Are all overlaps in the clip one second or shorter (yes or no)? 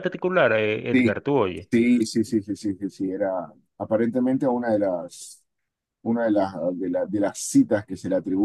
yes